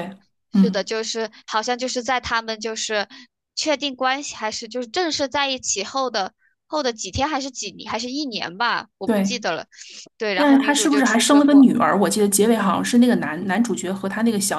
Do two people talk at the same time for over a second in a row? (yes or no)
yes